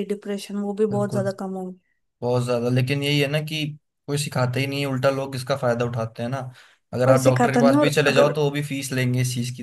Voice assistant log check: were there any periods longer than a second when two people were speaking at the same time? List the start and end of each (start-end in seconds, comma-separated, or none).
7.0-8.3